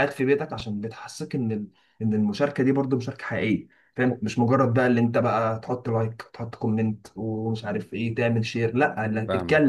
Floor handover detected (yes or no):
no